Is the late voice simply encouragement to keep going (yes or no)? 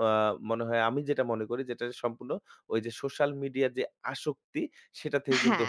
yes